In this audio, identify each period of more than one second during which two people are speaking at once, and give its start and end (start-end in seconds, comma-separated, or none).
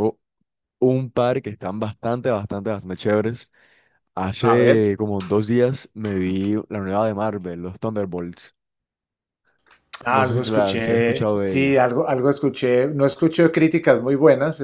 10.2-11.8